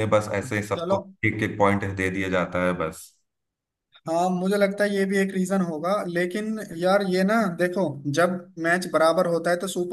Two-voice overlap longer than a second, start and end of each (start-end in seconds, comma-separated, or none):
none